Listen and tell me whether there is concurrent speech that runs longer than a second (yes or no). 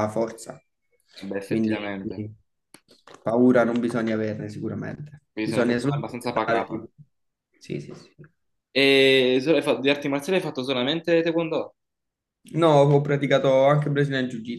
yes